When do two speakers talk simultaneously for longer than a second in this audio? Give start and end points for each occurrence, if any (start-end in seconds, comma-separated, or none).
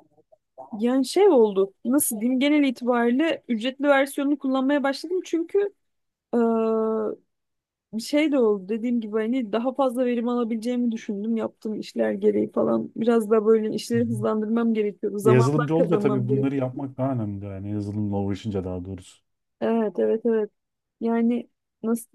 15.2-16.7